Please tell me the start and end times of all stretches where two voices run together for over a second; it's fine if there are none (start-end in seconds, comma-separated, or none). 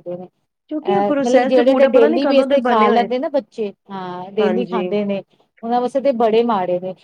0.9-3.1